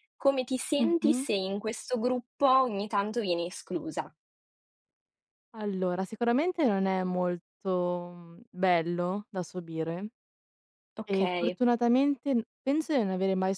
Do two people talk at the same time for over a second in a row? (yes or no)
no